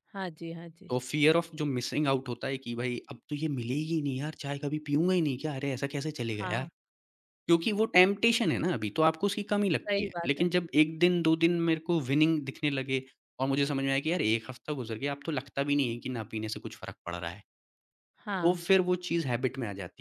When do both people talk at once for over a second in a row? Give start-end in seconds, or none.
none